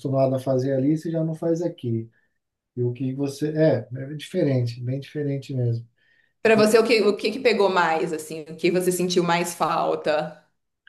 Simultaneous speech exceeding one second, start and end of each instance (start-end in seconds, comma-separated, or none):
none